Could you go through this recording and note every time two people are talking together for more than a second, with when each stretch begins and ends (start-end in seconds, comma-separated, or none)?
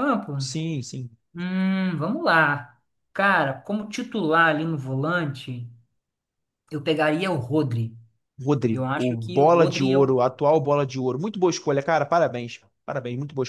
8.7-10.2